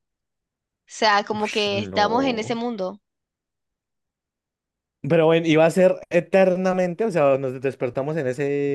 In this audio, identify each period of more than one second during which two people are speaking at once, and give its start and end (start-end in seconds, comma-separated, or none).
1.3-2.6